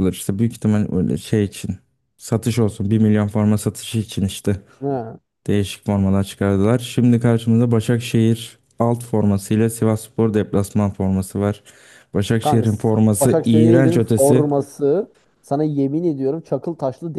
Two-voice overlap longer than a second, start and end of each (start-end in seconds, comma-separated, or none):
12.4-14.5